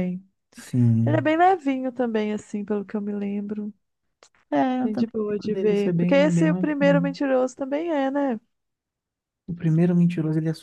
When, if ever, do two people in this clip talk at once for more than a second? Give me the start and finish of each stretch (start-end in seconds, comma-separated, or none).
4.8-7.2